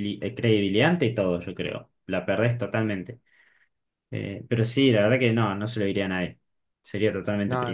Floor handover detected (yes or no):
yes